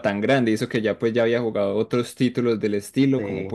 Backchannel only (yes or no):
yes